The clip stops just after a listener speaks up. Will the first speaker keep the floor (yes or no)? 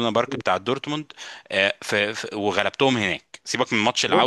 no